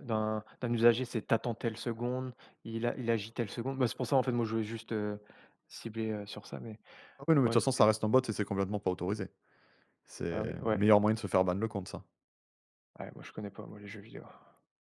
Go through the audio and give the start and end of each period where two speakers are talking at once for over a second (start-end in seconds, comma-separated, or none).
none